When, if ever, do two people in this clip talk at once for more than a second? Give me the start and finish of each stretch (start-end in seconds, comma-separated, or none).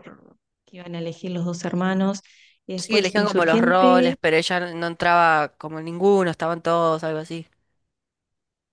2.8-4.2